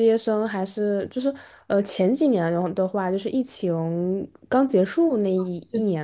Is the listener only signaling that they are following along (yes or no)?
yes